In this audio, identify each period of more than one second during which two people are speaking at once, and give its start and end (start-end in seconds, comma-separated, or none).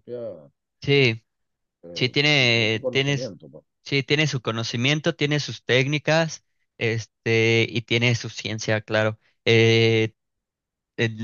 1.9-3.3